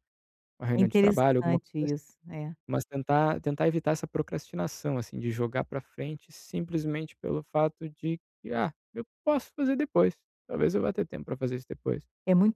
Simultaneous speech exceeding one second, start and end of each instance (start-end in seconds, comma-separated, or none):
0.8-2.0